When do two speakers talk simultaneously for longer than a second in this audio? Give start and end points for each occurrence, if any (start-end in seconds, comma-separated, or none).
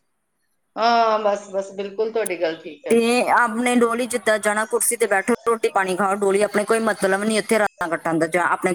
none